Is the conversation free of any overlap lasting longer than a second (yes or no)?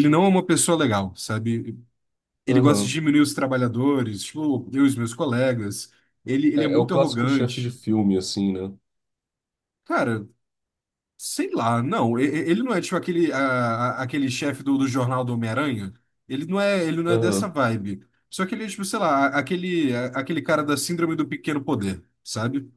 no